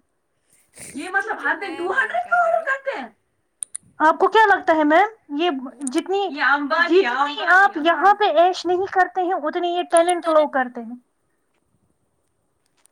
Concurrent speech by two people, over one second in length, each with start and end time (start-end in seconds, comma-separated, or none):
1.2-2.8